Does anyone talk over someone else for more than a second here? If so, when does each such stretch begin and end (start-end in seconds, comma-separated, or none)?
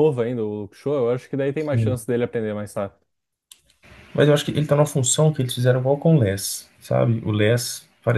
none